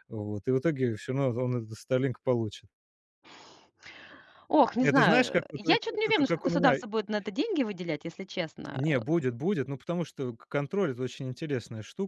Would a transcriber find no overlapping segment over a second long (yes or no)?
no